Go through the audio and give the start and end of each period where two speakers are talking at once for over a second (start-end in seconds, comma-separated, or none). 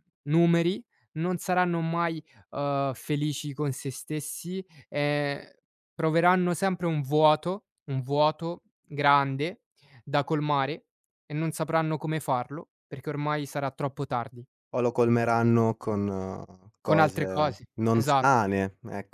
16.8-18.4